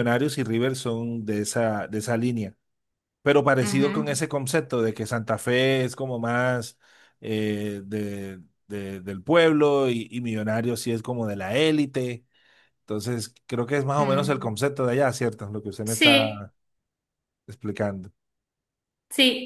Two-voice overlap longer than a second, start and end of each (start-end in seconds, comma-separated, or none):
none